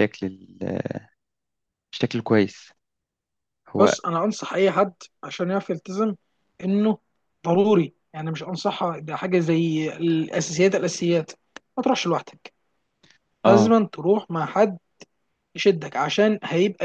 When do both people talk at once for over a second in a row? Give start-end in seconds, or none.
none